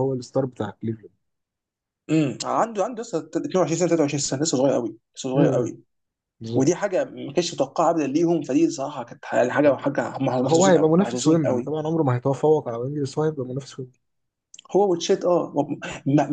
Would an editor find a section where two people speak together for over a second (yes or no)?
yes